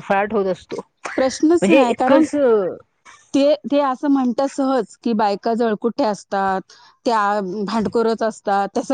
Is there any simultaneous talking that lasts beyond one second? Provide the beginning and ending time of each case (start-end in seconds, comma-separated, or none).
none